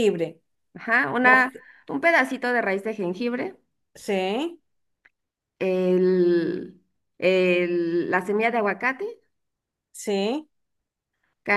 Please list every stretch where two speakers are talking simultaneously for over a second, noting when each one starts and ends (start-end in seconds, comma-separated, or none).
none